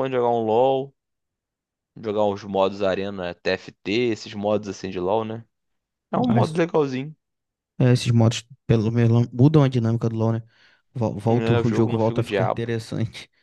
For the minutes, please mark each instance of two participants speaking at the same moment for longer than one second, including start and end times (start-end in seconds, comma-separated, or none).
11.3-12.7